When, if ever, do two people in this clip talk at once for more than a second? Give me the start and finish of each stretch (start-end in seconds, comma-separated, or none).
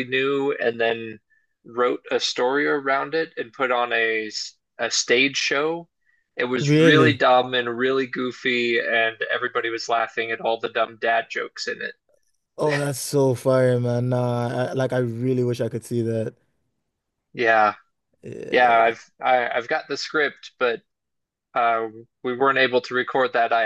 none